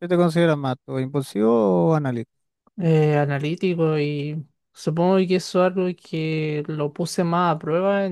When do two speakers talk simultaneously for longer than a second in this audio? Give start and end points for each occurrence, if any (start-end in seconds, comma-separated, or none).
none